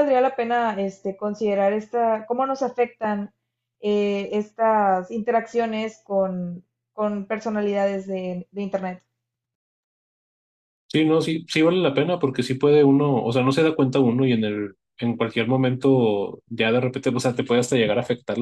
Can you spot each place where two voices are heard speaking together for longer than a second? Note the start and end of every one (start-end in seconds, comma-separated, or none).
none